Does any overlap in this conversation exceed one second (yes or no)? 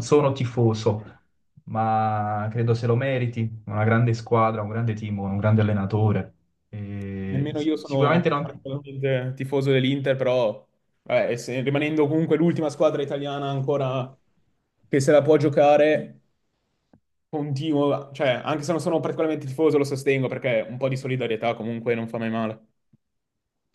yes